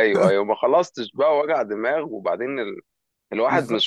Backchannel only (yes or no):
yes